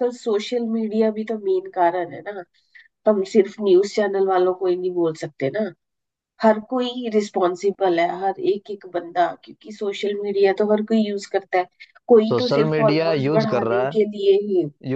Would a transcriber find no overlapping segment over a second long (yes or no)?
no